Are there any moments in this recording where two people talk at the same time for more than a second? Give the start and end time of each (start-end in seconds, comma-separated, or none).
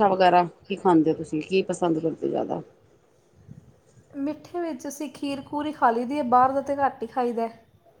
none